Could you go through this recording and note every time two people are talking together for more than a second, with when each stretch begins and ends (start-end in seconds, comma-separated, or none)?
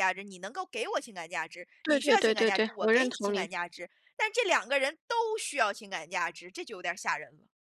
1.9-3.5